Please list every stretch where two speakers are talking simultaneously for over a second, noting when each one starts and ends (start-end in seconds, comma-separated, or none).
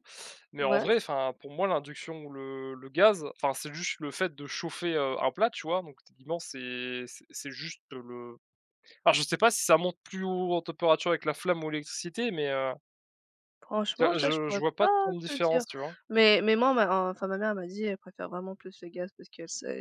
14.0-15.6